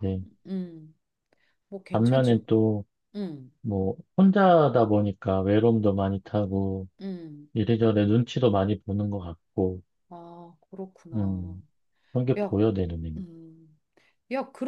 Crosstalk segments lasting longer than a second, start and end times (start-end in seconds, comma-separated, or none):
none